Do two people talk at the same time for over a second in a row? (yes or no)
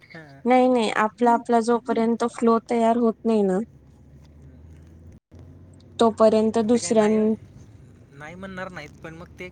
no